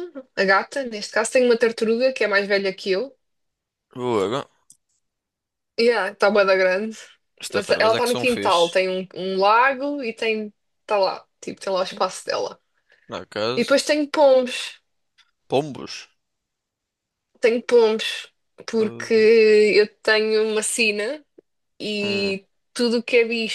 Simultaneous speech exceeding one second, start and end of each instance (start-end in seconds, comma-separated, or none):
7.5-8.8